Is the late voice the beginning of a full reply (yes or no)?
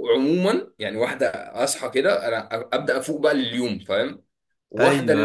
no